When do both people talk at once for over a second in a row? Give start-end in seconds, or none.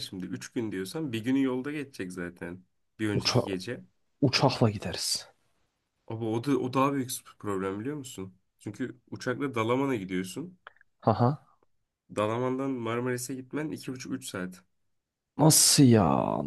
none